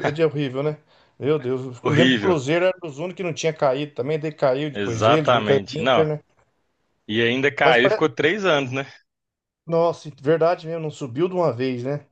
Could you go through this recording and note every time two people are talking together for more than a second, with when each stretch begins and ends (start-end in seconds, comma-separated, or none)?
4.7-6.1